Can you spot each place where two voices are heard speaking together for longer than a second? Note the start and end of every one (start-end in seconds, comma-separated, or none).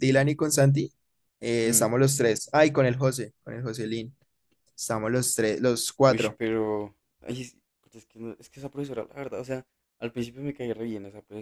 none